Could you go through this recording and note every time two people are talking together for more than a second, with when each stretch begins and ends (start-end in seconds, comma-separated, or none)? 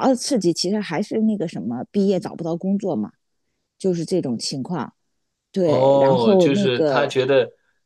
5.6-7.2